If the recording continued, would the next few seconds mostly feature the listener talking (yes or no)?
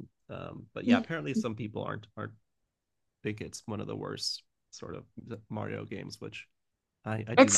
yes